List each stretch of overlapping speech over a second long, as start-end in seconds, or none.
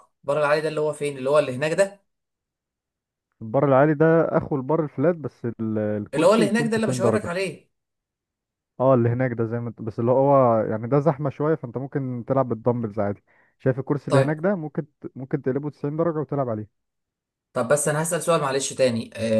6.1-7.3